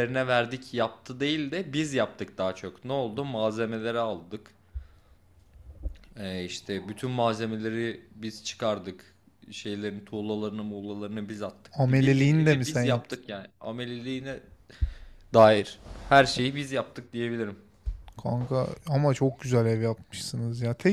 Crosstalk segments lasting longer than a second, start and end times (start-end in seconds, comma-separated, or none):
11.7-13.2